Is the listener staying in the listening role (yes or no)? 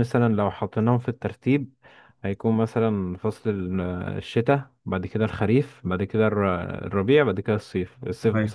yes